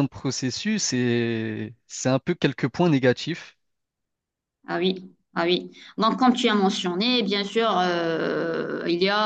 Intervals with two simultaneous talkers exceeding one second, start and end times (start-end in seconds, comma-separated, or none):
none